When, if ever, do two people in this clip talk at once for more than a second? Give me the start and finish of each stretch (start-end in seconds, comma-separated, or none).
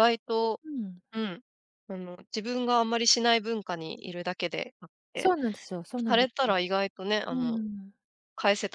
none